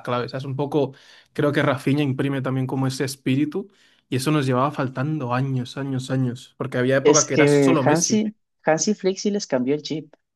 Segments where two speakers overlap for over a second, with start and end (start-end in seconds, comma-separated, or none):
7.0-8.3